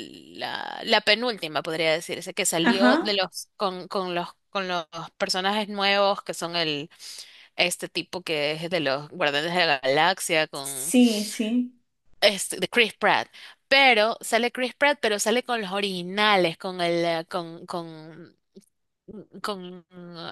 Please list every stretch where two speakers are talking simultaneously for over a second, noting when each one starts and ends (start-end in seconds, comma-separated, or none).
none